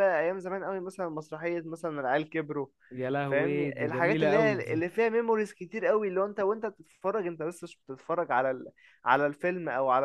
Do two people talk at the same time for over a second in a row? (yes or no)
yes